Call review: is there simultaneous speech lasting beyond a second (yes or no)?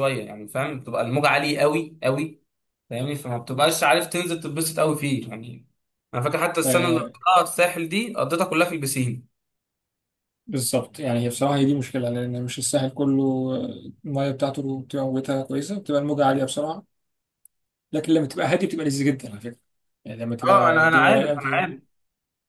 yes